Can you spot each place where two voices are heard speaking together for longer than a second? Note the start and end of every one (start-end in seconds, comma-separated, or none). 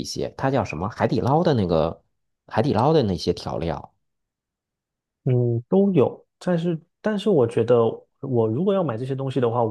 none